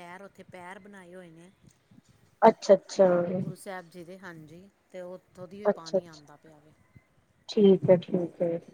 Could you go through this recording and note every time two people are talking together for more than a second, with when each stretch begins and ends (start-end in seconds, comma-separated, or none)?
none